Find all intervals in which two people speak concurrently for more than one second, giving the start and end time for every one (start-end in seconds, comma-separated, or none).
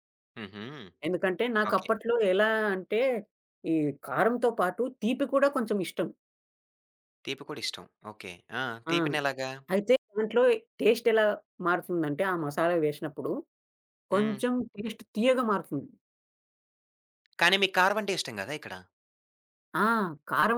none